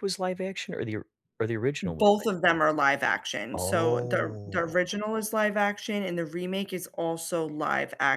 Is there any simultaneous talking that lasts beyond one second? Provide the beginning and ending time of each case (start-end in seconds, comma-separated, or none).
3.5-4.8